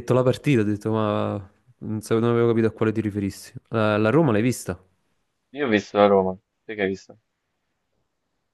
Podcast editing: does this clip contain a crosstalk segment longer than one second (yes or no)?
no